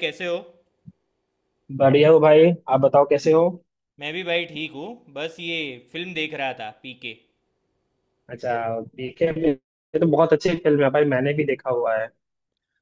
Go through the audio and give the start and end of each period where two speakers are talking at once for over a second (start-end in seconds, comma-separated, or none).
none